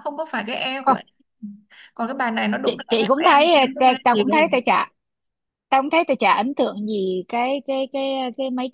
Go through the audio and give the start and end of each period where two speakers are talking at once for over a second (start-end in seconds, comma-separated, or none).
2.6-4.5